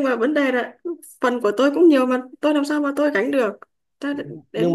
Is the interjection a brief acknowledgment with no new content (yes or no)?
no